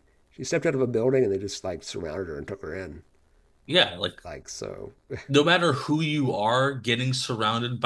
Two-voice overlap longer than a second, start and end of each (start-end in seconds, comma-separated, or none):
none